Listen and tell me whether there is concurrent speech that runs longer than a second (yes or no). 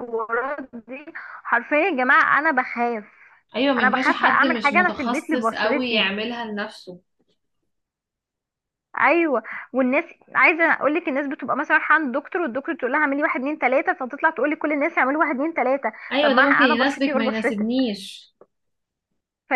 yes